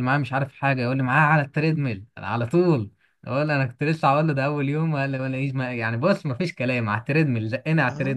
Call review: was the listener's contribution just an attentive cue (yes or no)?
no